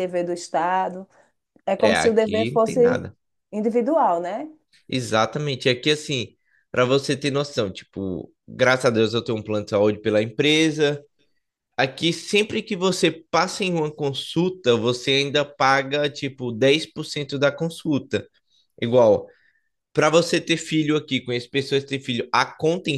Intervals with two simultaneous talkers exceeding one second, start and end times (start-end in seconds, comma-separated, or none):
1.8-3.0